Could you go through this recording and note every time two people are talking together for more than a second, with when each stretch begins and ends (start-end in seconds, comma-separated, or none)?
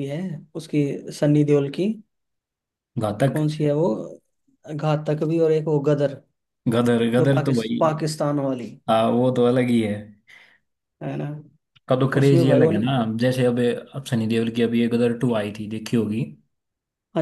none